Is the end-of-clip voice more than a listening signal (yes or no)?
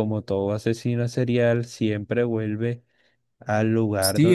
yes